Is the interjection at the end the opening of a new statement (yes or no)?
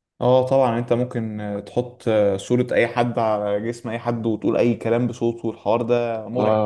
yes